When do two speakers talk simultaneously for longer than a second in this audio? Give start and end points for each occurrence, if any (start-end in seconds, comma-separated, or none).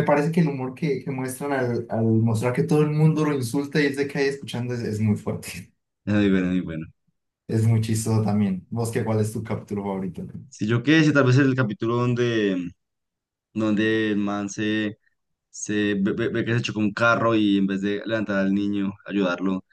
none